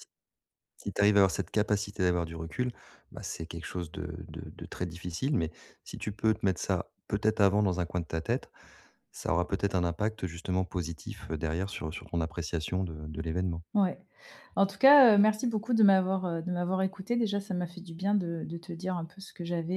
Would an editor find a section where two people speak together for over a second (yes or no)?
no